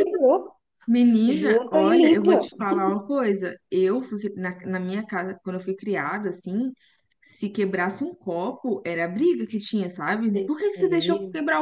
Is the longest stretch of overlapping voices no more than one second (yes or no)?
no